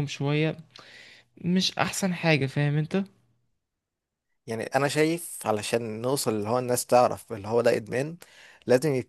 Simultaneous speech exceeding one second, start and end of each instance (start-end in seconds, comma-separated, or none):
none